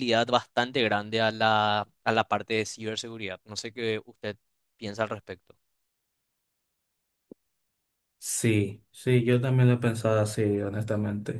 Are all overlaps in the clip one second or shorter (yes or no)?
yes